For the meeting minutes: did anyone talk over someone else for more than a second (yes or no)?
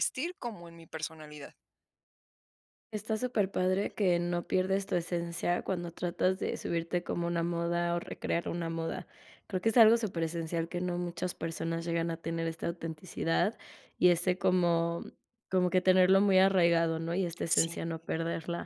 no